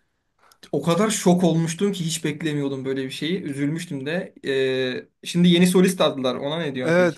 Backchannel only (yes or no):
no